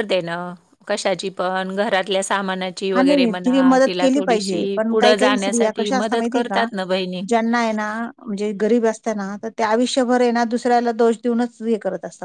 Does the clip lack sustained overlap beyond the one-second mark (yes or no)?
no